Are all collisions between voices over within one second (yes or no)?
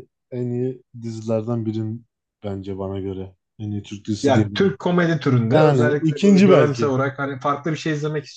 no